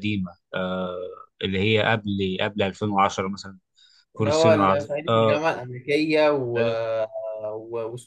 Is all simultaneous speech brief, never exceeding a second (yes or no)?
no